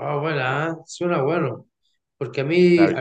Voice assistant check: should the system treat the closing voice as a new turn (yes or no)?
no